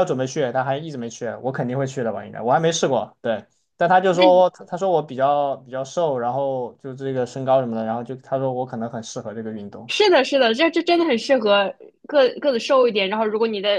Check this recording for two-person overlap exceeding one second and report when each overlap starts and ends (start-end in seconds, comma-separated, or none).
none